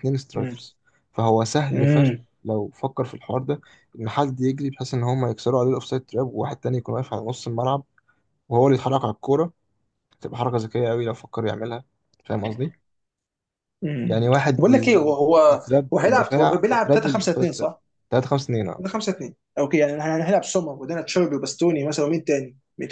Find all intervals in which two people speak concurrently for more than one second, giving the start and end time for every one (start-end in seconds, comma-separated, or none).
14.1-17.7